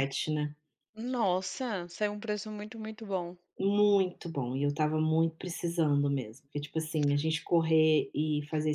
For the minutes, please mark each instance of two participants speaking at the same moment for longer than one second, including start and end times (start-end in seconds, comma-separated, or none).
none